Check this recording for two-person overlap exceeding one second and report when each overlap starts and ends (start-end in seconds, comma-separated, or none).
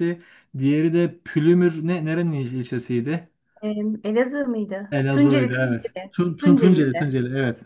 4.9-7.1